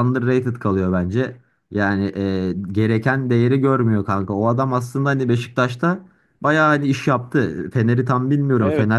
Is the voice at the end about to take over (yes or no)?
no